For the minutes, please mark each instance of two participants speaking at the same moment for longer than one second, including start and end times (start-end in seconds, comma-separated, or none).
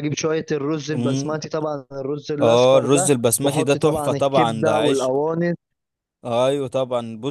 2.4-5.1